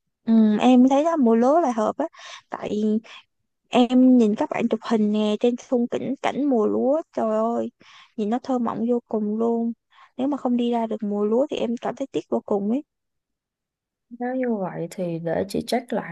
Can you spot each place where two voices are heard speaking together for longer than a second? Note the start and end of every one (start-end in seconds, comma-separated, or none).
none